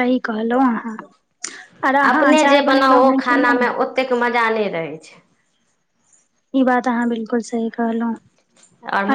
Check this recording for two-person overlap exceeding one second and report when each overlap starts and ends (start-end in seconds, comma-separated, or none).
none